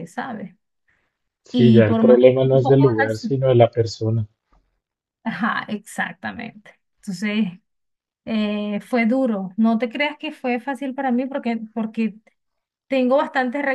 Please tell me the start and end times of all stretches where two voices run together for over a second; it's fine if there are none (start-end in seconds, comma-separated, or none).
1.5-3.4